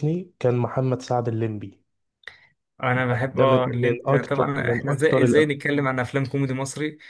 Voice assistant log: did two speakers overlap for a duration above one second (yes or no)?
yes